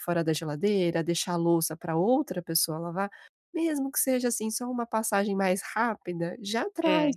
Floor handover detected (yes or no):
no